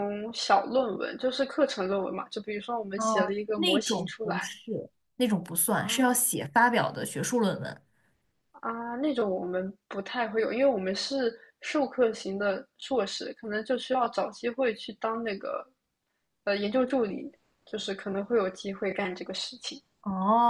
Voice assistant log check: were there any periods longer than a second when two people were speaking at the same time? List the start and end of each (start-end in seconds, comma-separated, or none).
3.0-4.5